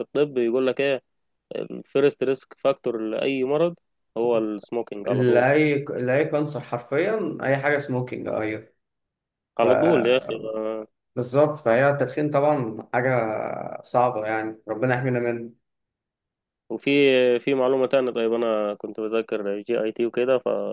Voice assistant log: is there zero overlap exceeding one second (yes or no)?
yes